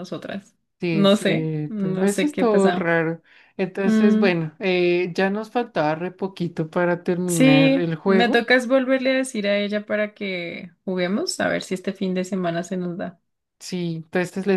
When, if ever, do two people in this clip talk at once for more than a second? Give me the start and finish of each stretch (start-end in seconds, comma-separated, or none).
0.9-2.9, 7.2-8.5